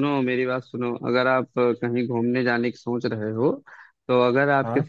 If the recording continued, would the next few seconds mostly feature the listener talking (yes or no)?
no